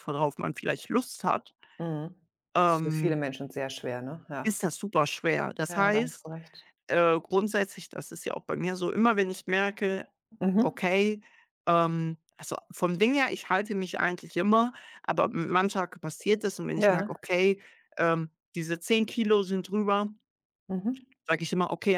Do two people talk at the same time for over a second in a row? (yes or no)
no